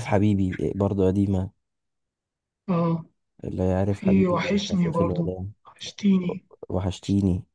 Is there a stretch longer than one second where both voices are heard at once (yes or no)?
yes